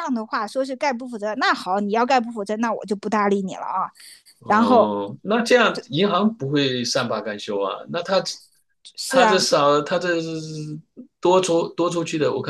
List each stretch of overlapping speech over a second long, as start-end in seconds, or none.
none